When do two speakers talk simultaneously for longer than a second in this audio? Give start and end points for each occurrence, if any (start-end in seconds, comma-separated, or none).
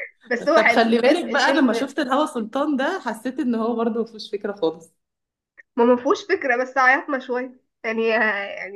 0.6-1.9